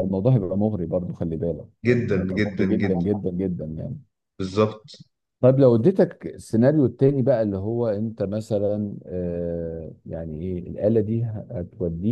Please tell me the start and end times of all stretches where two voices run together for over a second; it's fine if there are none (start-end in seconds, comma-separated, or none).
1.9-3.2